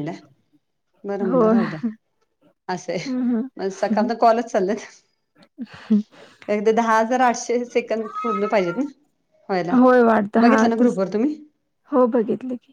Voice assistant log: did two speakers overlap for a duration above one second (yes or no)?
no